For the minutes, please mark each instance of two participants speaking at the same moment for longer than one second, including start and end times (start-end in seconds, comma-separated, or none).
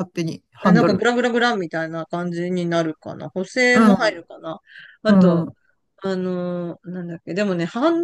none